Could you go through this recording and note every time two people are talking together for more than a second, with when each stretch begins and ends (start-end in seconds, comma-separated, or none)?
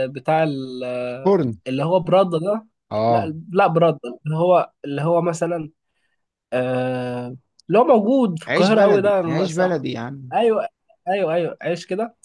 8.5-9.7